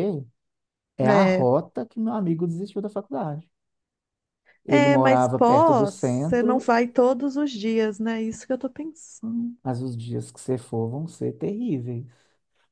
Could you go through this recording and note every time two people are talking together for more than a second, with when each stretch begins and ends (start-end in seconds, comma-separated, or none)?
4.7-6.7